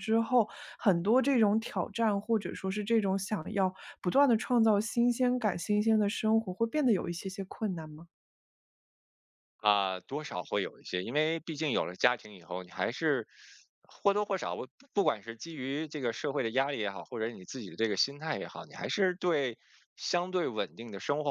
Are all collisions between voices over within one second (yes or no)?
yes